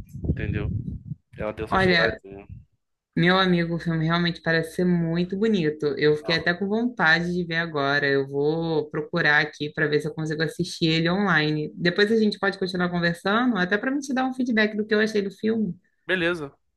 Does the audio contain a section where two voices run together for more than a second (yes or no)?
no